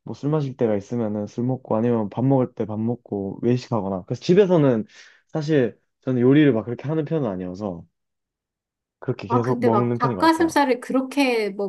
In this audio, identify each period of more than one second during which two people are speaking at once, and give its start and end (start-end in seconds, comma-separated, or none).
9.3-10.6